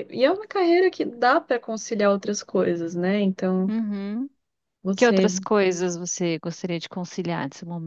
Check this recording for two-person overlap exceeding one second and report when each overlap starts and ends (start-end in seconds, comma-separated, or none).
none